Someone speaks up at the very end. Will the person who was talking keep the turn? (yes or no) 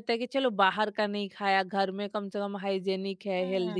no